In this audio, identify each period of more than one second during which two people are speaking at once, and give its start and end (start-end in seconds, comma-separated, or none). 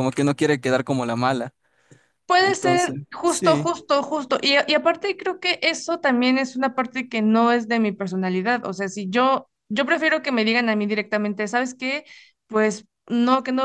2.4-3.7